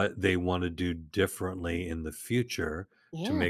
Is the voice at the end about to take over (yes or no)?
no